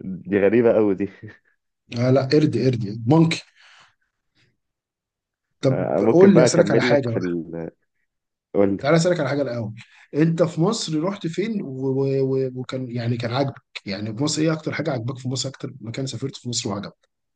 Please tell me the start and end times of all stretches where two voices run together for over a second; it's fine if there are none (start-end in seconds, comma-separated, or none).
5.7-7.3